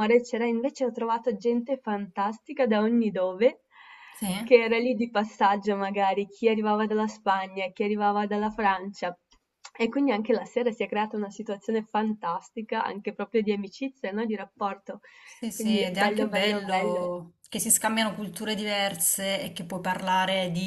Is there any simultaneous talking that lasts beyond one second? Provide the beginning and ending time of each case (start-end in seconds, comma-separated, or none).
15.5-17.1